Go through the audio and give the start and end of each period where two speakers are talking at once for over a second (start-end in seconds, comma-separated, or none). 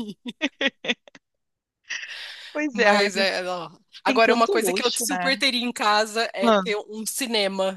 4.0-5.3